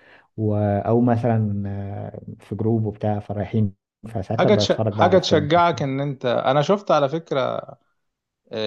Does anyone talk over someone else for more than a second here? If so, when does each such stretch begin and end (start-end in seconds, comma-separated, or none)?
4.4-5.8